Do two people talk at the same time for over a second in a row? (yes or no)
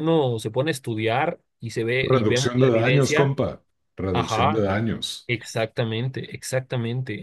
yes